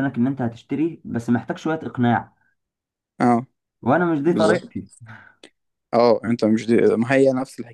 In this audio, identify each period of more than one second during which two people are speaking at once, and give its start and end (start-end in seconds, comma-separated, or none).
none